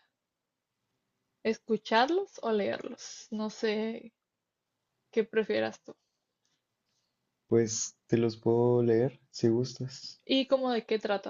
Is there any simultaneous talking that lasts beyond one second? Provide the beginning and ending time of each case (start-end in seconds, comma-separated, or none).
none